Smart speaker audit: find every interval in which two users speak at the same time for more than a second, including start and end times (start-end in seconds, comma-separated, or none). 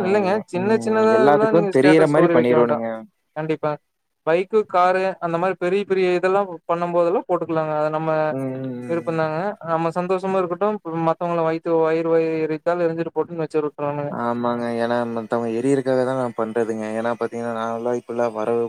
0.6-2.8